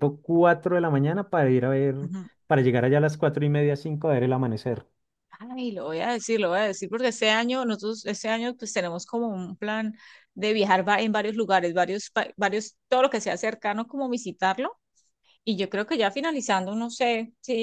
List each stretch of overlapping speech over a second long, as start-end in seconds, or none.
none